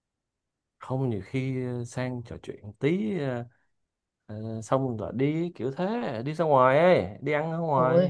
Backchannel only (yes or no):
no